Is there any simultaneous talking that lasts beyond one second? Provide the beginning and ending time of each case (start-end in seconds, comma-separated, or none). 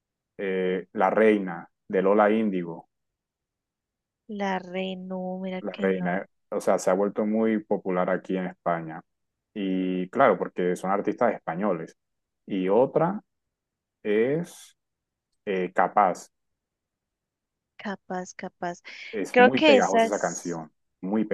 19.3-20.6